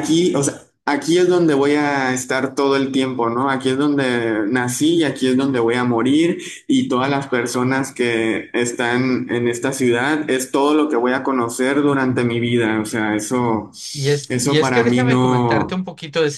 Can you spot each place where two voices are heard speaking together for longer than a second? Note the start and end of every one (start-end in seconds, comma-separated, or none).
14.3-15.8